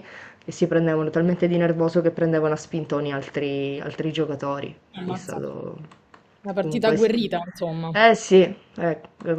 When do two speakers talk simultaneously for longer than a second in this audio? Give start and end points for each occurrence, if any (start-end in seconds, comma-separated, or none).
none